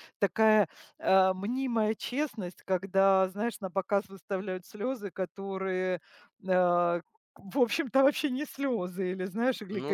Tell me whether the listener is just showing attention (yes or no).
yes